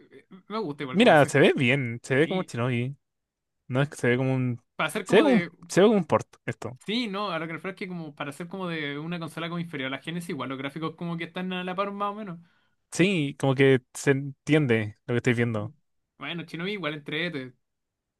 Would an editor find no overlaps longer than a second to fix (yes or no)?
yes